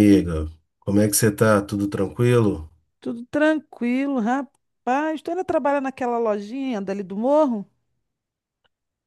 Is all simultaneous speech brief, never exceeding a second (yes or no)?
yes